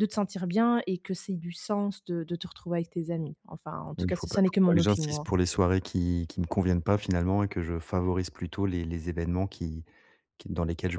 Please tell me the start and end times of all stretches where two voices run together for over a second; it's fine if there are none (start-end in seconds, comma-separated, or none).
4.0-5.2